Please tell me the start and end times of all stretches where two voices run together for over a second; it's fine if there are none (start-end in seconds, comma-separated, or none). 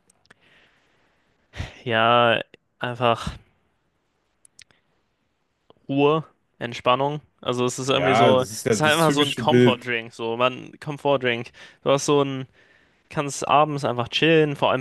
7.8-9.9